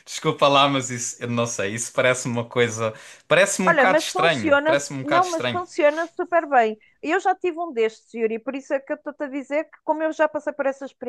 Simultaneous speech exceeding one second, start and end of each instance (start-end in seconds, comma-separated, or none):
3.7-5.6